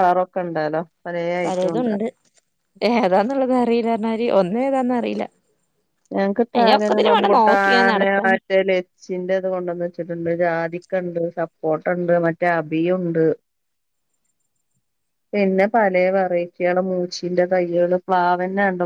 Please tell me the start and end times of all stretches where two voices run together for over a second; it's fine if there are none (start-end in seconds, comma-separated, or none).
6.6-8.4